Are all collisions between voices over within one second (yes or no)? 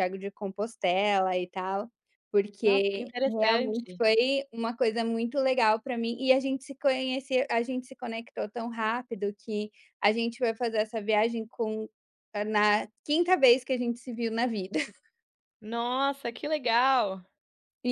no